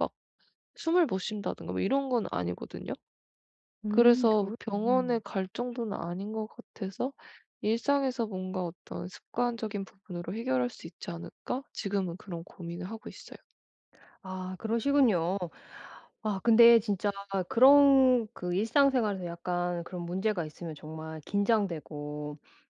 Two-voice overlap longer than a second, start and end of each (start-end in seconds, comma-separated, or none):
3.9-5.2